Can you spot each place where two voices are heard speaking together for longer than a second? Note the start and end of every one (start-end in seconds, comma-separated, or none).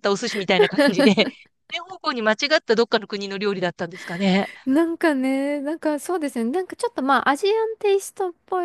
none